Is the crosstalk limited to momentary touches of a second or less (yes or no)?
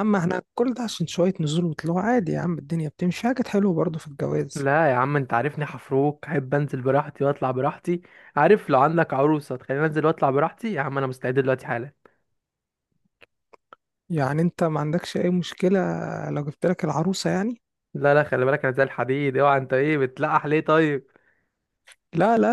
yes